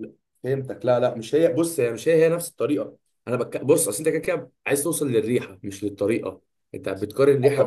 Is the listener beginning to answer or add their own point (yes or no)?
yes